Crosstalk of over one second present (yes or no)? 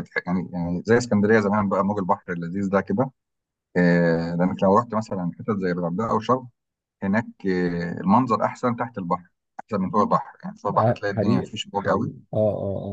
yes